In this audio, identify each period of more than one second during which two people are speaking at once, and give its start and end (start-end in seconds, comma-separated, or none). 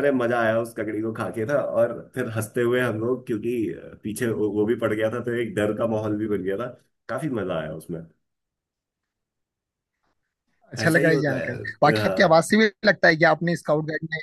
10.8-12.5